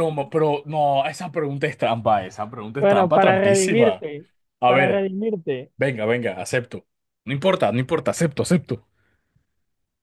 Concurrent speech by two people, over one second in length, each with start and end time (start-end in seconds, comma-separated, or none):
2.8-4.0